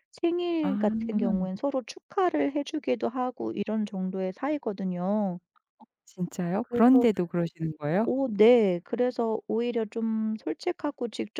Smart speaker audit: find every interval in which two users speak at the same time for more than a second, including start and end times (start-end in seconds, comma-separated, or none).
none